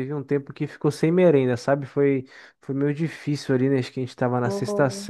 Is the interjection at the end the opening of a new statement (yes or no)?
no